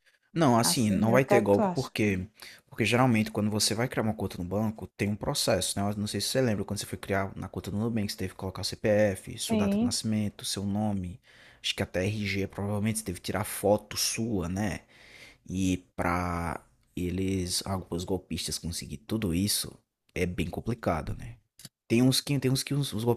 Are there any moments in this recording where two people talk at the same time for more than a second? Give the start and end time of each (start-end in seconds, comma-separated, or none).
0.6-1.9